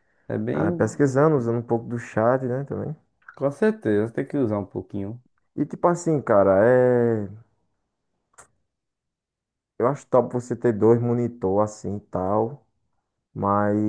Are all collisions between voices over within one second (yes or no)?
yes